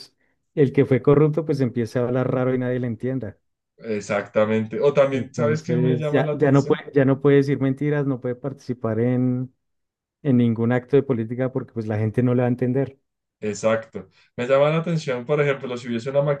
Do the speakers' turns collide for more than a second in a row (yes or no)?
yes